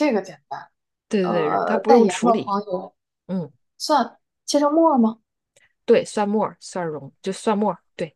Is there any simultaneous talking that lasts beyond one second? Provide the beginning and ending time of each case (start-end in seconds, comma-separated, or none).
1.2-2.5